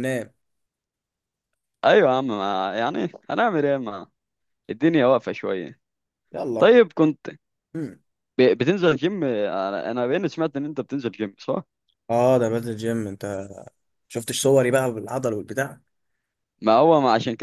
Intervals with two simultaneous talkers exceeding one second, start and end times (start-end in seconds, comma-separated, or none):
none